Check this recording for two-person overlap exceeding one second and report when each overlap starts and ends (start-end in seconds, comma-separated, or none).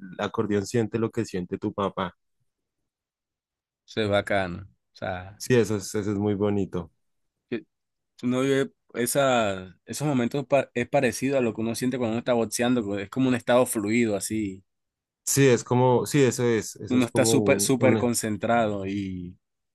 16.9-18.1